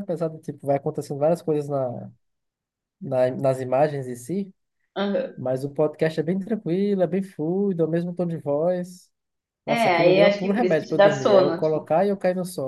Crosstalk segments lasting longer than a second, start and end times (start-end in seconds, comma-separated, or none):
9.7-11.9